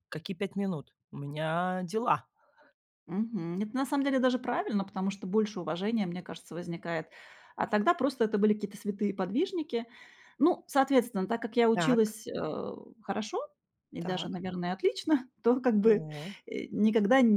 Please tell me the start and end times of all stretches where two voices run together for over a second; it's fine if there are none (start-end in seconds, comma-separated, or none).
none